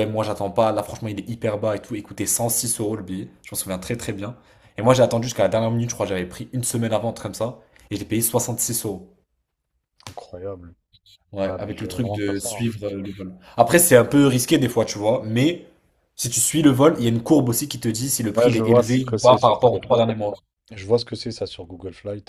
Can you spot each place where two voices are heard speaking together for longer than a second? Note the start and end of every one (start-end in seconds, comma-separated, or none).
11.4-12.7, 18.3-19.9